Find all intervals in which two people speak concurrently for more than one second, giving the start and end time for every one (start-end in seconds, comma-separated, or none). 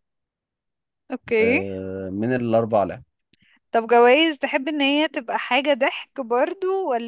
none